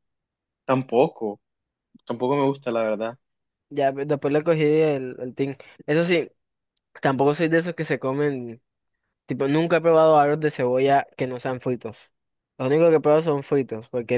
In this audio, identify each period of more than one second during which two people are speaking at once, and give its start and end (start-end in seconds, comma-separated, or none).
none